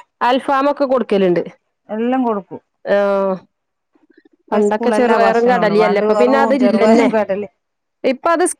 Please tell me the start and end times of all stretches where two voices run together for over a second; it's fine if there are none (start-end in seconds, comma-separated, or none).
4.5-7.1